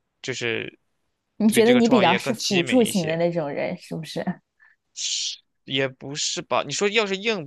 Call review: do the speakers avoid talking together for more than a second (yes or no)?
no